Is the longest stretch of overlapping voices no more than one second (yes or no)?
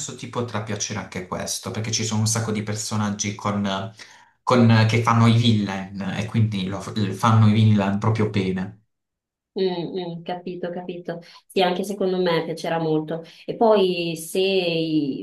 yes